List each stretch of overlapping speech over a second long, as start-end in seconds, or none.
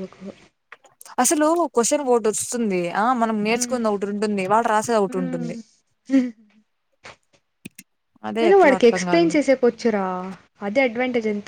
none